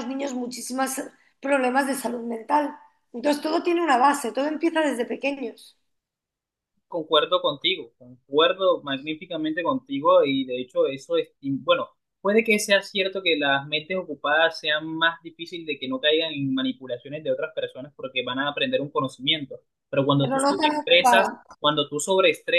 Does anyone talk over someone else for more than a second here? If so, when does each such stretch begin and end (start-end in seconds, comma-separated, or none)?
20.2-21.4